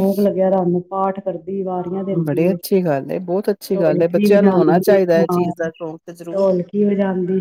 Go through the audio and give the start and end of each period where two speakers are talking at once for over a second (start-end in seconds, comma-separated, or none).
3.7-5.4